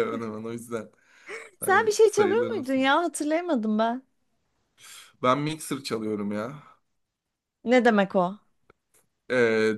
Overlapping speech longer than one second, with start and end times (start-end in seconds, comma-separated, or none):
1.6-2.9